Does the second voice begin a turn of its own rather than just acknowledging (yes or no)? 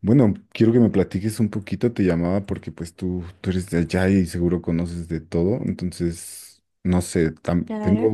no